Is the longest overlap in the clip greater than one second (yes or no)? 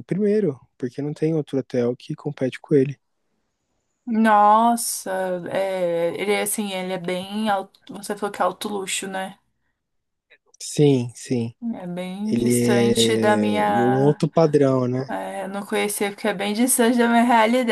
yes